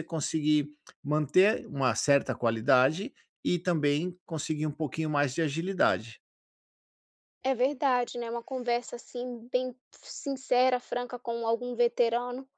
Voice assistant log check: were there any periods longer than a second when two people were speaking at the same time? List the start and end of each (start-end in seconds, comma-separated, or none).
none